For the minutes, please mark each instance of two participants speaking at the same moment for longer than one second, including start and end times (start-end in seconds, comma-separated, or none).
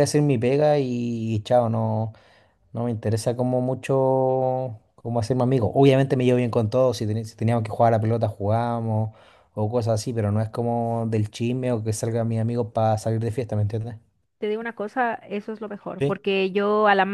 none